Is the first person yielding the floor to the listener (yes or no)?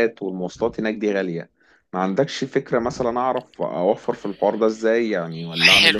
yes